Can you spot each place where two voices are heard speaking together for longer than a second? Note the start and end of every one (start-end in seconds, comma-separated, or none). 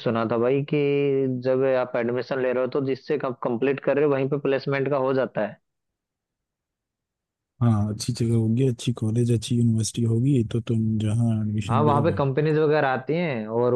none